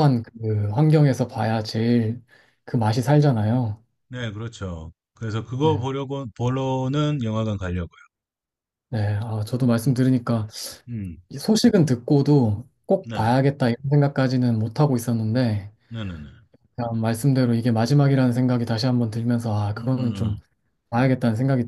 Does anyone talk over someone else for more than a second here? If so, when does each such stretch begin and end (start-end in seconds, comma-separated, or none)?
none